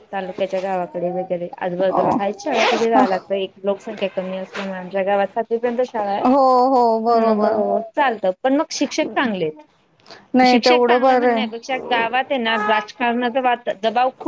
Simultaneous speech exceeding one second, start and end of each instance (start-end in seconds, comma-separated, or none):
10.5-11.7